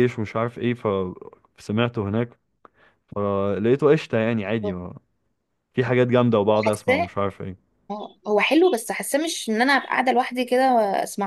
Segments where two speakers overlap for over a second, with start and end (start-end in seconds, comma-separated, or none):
none